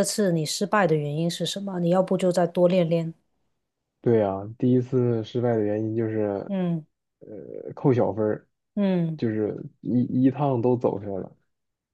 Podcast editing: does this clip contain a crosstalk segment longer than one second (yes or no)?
no